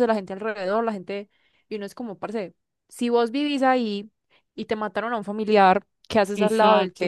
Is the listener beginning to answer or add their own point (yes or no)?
yes